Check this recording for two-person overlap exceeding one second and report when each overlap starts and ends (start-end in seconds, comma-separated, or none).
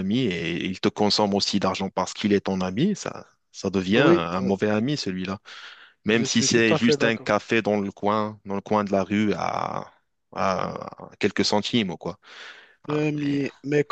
6.1-7.3